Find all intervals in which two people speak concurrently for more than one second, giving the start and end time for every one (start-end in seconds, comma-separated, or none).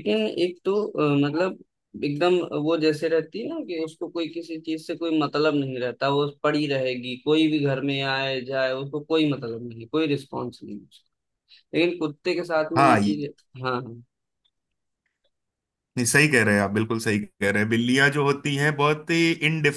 none